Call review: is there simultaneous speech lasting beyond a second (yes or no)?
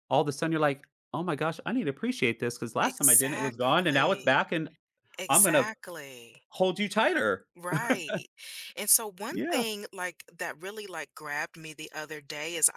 yes